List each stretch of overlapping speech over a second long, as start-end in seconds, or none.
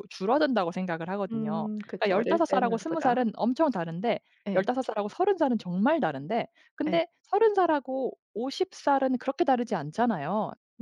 1.3-3.2